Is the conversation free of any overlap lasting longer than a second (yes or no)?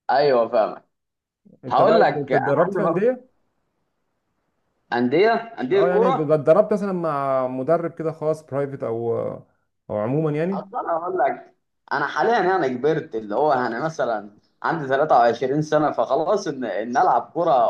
no